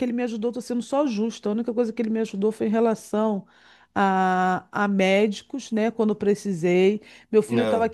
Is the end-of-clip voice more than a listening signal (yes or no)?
no